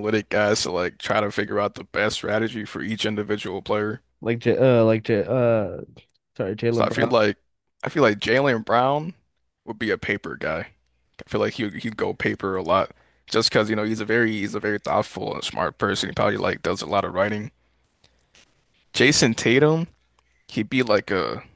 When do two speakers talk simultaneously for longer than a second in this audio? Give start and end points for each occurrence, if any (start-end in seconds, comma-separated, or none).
none